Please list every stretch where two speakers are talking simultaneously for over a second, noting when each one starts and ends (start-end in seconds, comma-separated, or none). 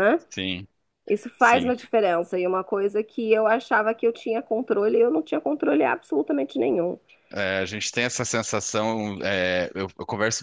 none